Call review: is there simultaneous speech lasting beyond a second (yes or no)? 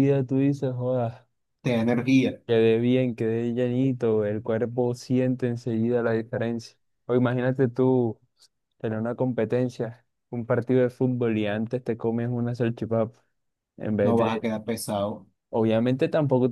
no